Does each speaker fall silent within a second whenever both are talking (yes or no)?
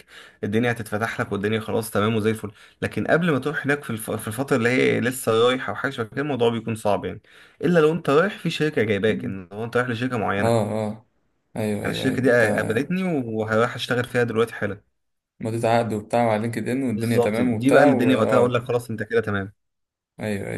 no